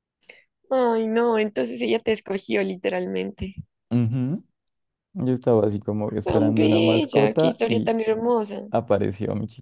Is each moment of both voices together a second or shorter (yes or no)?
no